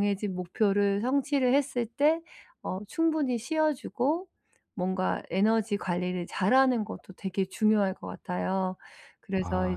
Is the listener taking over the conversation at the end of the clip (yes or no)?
no